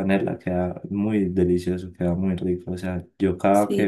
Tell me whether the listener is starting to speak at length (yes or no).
no